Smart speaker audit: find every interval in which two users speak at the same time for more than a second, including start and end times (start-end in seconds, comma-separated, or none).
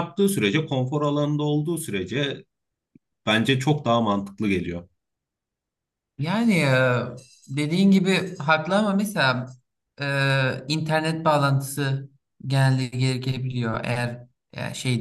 none